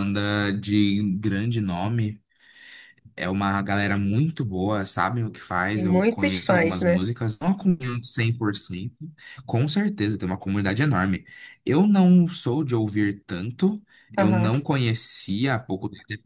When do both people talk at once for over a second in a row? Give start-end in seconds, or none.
5.7-7.1